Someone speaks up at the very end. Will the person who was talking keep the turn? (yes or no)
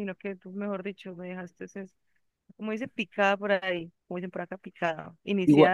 yes